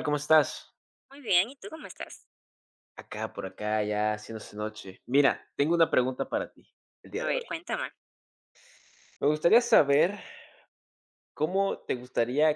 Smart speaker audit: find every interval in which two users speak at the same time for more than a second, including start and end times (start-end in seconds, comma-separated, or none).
none